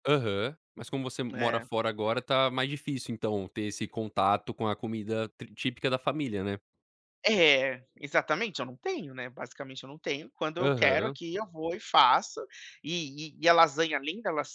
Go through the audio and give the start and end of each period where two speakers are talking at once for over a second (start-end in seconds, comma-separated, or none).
none